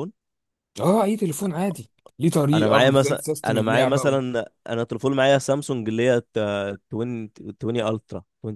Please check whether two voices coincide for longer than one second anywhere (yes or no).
yes